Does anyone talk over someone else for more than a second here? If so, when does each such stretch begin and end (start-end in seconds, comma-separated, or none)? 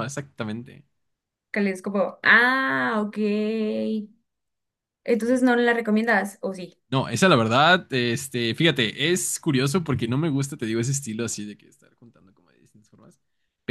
none